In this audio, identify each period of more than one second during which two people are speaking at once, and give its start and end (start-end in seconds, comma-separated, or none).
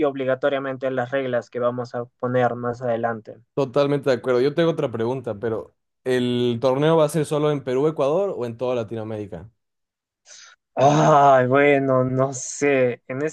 none